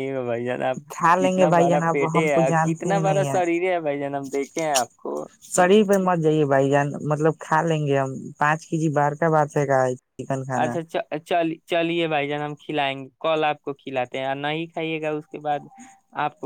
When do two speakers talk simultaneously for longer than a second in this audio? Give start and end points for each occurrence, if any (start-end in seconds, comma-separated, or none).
0.9-3.3